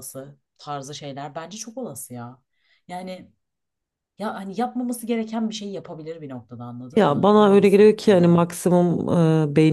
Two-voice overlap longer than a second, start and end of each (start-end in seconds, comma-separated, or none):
7.0-8.5